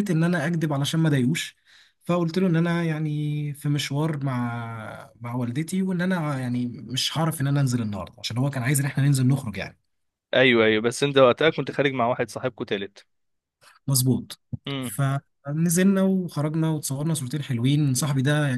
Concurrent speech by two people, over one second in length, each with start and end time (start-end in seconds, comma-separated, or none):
none